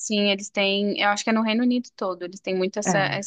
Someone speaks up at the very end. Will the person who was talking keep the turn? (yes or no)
yes